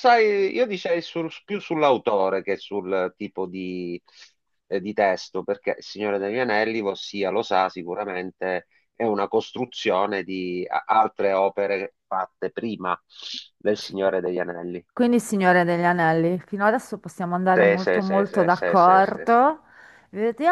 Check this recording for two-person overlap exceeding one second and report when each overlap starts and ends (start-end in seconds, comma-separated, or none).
17.6-19.4